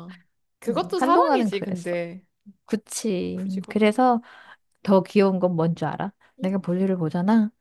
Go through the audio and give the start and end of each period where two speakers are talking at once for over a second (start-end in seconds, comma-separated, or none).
0.7-1.9